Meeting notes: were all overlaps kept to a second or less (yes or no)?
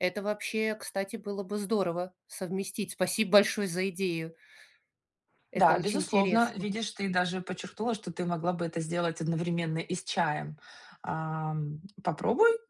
no